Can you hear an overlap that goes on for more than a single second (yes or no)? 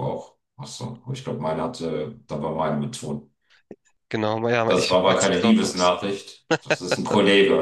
yes